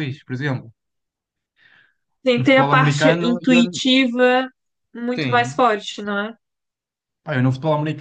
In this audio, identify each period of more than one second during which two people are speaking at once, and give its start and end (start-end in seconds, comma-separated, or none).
2.3-3.6